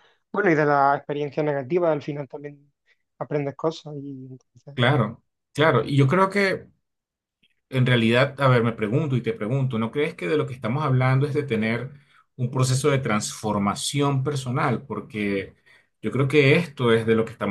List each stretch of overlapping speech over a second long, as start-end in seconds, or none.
none